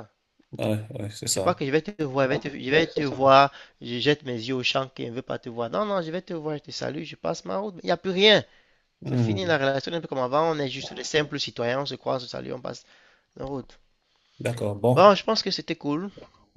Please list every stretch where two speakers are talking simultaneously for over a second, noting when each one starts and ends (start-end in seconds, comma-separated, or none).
none